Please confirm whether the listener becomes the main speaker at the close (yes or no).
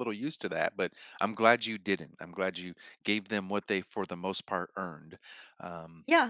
yes